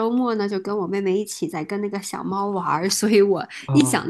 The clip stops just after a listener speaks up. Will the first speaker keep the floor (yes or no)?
yes